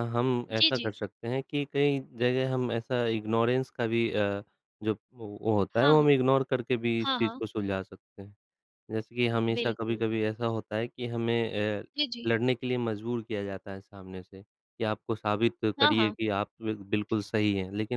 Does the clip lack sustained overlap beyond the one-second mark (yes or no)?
yes